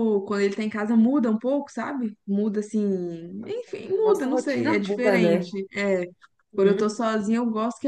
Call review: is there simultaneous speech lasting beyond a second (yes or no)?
yes